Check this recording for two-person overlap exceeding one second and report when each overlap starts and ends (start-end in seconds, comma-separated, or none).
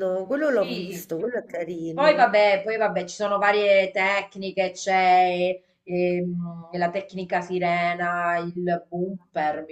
none